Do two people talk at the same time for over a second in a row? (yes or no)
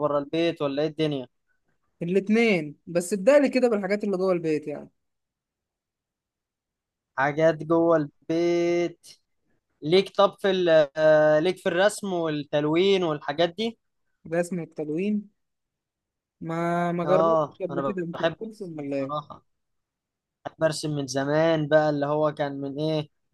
yes